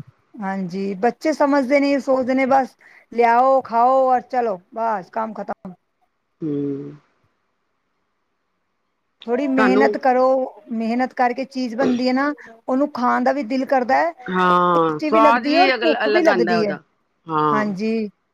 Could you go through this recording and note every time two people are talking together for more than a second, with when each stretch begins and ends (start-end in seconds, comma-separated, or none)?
14.3-16.7